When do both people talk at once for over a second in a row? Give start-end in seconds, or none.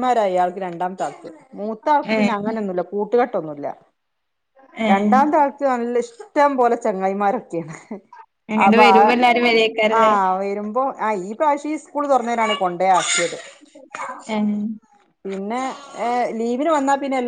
none